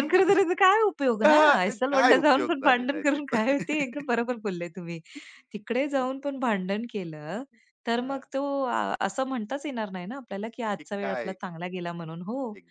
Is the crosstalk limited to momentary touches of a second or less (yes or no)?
no